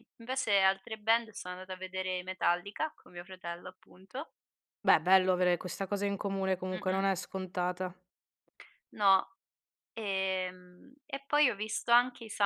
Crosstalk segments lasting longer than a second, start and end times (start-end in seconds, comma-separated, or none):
none